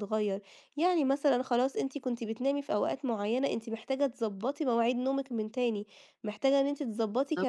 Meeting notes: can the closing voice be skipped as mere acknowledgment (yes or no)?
yes